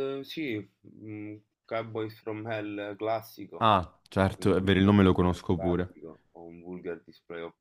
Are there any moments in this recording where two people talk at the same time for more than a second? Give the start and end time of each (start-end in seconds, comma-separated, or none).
4.4-5.9